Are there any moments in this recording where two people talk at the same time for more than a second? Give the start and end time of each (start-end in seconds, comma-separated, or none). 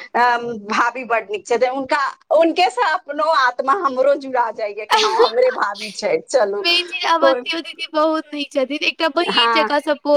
none